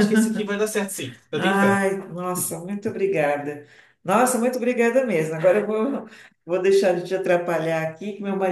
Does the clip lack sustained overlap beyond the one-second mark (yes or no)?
yes